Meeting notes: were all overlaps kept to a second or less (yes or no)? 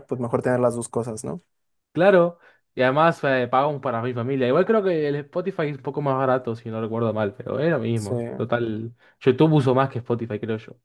yes